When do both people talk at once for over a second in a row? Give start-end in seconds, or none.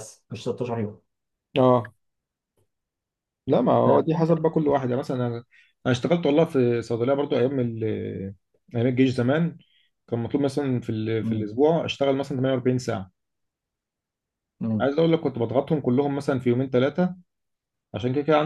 none